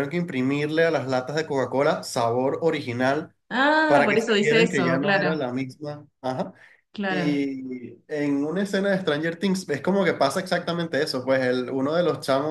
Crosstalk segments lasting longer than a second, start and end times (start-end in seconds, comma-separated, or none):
3.9-5.3